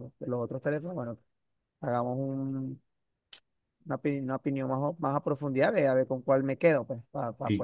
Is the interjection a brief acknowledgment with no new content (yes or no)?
no